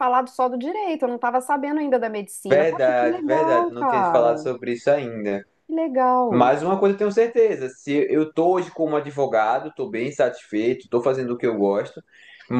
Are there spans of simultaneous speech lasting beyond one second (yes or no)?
yes